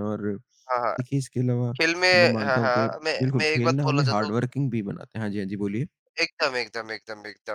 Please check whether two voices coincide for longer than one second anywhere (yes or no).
yes